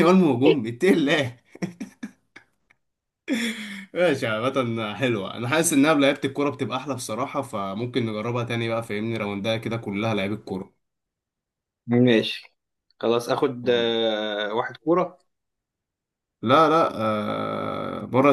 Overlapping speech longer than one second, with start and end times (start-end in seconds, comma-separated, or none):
none